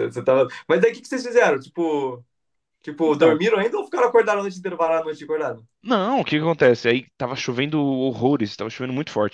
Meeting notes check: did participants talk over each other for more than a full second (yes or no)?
no